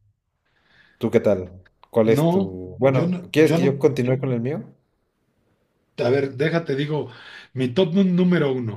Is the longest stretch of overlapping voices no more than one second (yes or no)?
no